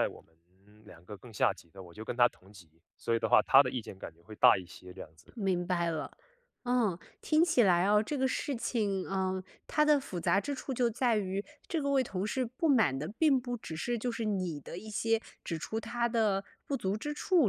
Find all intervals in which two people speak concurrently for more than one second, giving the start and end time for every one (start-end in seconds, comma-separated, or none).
none